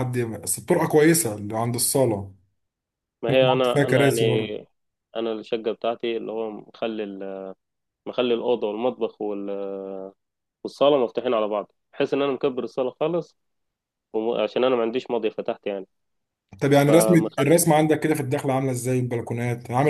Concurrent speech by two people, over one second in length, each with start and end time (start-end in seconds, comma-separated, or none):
3.3-4.7